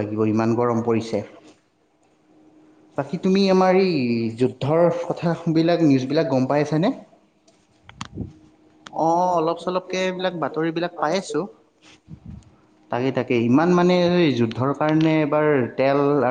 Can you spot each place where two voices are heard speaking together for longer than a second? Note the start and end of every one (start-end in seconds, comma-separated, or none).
none